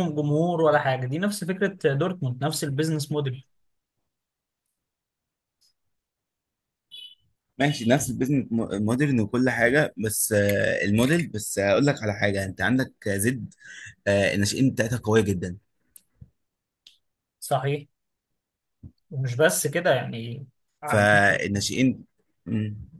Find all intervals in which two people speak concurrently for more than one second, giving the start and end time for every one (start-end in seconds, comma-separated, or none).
none